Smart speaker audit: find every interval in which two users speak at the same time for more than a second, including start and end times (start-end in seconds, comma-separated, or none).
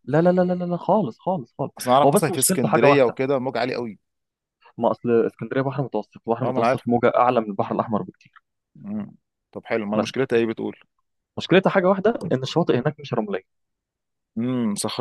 1.8-3.2